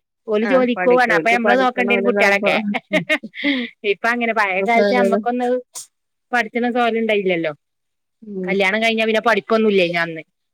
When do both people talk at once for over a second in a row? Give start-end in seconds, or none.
0.5-2.5